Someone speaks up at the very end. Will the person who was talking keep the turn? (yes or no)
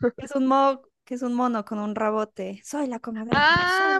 no